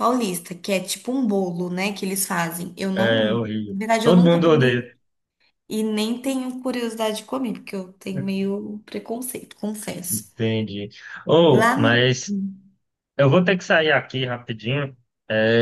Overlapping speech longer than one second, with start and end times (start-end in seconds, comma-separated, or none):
2.9-4.9